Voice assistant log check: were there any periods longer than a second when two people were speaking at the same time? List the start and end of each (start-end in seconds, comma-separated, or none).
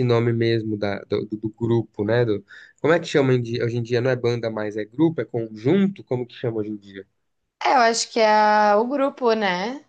none